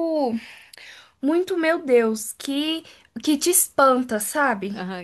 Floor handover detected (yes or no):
yes